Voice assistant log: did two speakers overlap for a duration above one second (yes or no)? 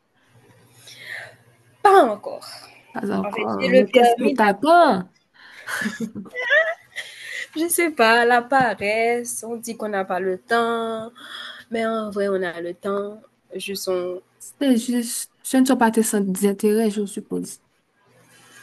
yes